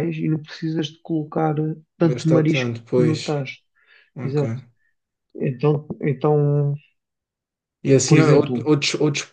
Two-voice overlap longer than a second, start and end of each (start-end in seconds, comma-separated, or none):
2.0-3.4